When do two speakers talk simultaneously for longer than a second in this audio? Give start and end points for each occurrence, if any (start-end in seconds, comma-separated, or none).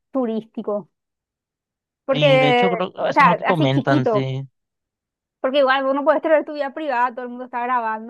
2.1-4.3